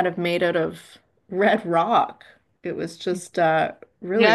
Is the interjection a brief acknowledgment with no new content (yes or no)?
no